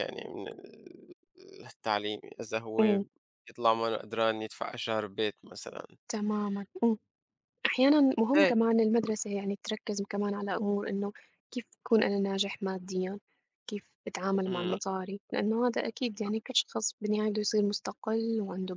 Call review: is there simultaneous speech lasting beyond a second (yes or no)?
no